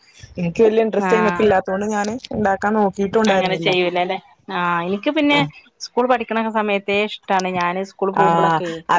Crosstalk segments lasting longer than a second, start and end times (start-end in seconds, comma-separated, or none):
none